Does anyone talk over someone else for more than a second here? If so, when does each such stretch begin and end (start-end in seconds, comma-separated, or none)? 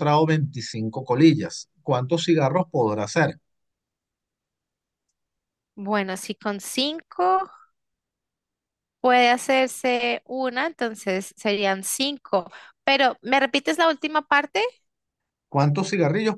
none